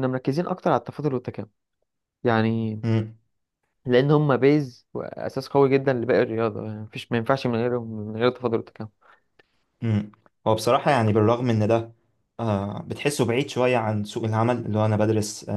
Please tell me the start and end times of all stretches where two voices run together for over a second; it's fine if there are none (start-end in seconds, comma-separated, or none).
none